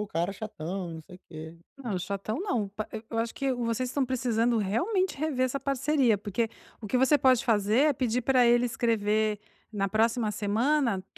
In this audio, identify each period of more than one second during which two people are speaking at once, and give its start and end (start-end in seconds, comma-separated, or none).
none